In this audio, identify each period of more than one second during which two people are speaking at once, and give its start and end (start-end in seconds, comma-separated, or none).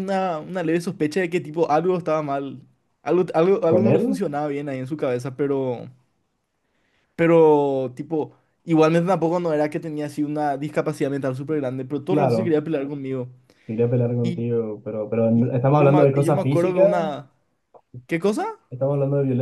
15.3-16.9